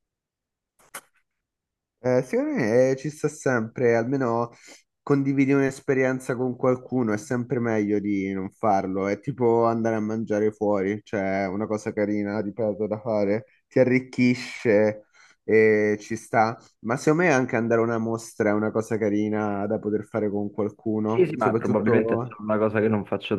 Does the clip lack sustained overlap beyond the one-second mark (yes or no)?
no